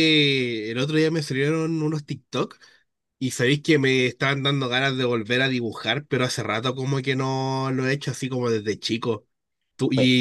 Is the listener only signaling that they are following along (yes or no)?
yes